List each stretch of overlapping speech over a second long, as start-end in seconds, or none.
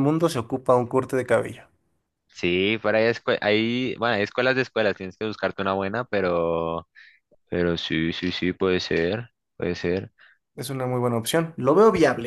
none